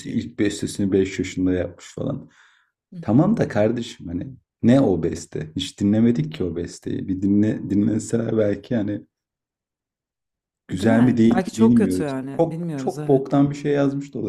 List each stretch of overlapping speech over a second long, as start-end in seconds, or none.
10.7-13.2